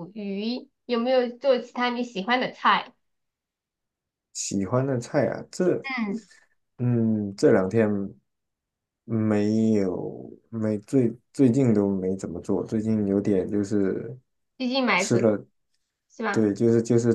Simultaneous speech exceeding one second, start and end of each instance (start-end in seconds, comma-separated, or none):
none